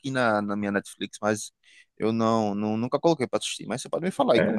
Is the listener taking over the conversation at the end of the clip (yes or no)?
yes